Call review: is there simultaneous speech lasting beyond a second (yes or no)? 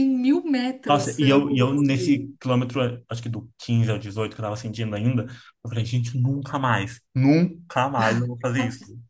yes